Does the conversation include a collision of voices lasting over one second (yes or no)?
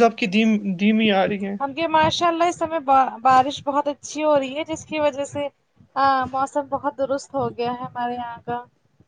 no